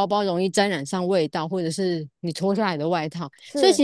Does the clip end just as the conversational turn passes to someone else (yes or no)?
no